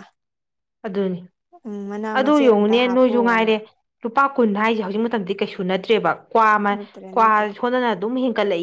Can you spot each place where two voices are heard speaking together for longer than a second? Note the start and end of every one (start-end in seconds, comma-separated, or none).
2.1-3.5